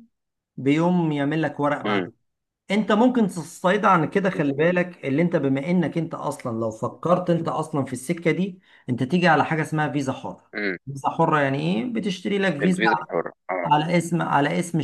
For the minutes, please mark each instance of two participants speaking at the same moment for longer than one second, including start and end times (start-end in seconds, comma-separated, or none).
none